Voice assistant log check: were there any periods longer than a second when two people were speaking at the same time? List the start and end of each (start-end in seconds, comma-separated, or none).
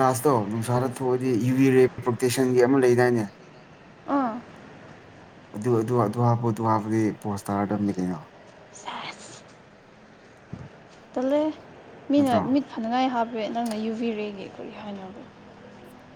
none